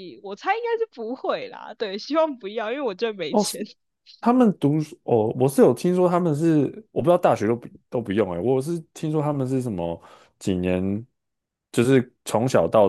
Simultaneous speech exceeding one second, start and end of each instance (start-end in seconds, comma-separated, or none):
none